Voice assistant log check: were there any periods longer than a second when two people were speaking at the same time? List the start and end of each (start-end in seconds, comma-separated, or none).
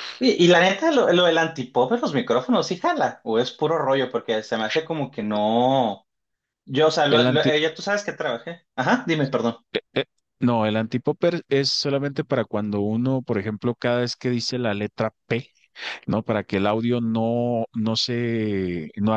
none